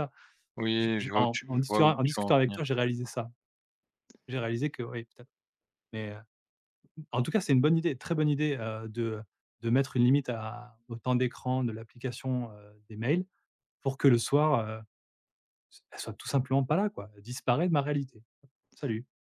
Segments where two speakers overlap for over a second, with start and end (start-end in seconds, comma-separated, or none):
0.8-2.6